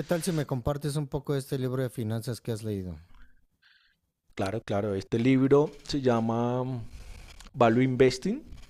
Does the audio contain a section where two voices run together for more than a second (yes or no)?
no